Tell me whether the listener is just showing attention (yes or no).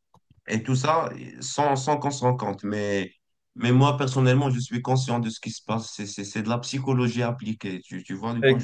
no